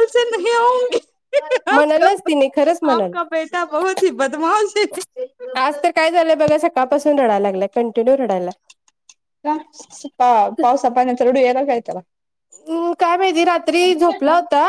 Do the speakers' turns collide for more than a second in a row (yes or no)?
no